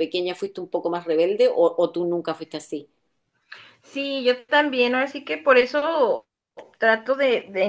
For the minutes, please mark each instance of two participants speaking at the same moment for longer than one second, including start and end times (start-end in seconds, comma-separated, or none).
none